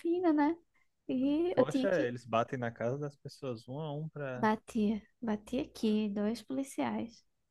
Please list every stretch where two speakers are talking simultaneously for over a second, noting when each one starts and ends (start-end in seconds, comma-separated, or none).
none